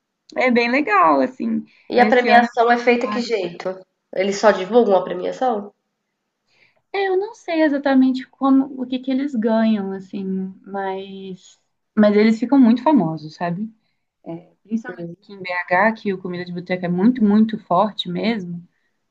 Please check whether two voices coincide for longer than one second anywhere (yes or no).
yes